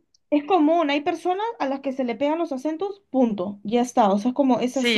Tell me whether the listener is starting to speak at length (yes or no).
no